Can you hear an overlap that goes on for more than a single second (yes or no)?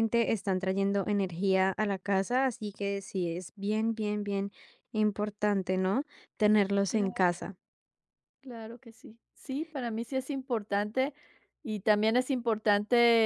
no